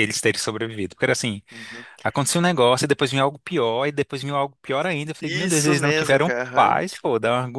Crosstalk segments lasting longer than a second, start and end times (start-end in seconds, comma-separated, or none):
5.2-6.8